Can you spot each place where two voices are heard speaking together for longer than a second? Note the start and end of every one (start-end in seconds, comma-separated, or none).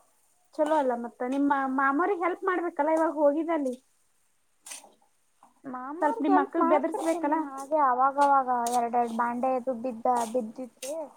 6.0-7.4